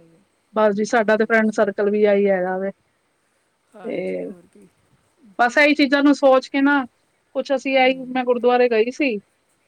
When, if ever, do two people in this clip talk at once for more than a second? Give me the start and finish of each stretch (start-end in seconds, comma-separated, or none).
none